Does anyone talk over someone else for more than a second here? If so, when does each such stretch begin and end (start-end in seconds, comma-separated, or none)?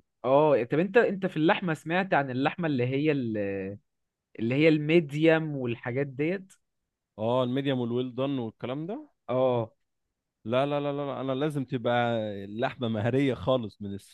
none